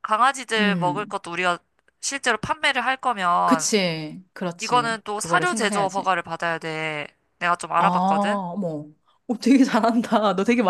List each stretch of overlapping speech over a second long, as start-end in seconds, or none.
4.6-6.1